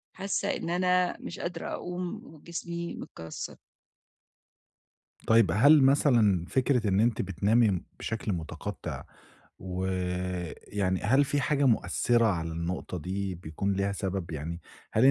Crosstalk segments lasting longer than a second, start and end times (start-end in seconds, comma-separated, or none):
none